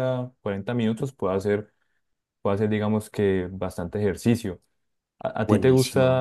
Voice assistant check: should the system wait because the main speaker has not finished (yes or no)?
yes